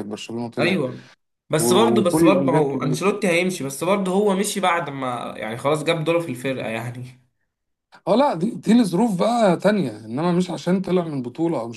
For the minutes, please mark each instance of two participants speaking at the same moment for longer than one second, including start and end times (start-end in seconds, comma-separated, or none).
1.6-3.0